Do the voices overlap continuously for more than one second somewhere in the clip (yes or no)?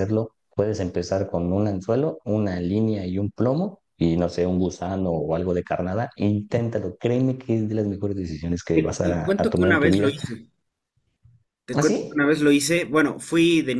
yes